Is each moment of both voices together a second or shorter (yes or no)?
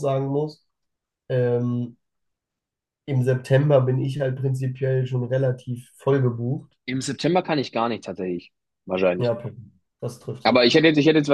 yes